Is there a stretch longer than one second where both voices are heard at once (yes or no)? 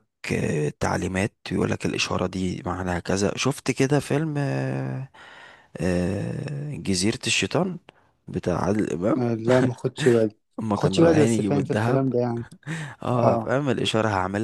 yes